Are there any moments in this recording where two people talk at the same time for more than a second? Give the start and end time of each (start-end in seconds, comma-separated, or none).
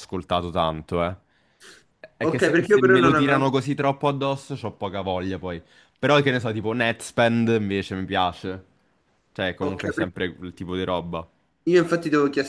2.2-3.6